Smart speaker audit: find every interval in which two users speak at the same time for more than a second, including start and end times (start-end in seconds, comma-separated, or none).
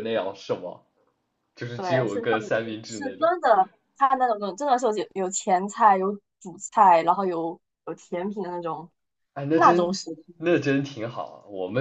1.8-3.3